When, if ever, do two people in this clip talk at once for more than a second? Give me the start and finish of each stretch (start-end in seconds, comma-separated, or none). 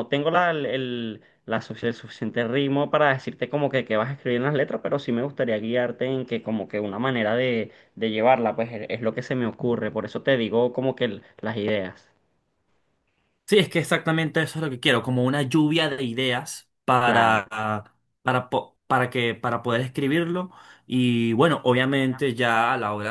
none